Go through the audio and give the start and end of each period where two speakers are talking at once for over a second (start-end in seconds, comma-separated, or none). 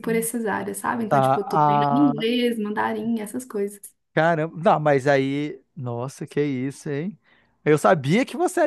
1.1-2.3